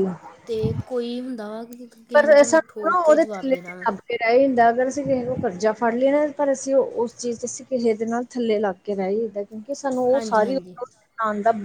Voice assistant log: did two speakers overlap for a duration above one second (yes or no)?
yes